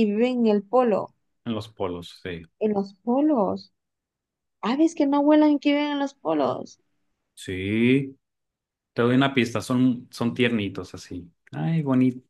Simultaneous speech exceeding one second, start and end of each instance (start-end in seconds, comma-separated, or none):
none